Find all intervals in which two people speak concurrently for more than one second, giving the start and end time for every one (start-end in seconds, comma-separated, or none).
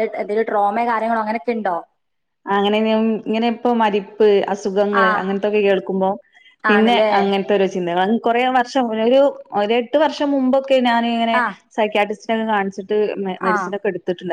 none